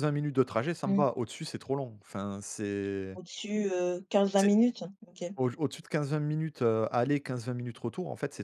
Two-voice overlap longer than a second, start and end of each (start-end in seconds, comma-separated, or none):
none